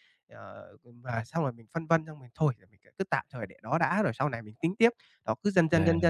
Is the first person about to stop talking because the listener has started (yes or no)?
no